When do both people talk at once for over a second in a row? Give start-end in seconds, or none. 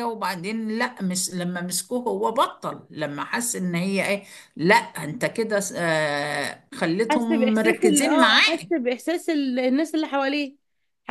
7.1-8.7